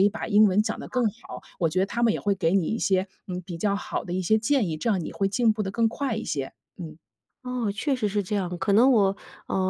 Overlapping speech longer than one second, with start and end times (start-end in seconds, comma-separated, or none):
none